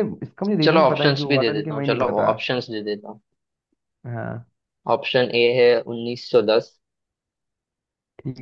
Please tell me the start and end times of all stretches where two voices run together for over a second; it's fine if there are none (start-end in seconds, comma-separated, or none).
0.6-2.3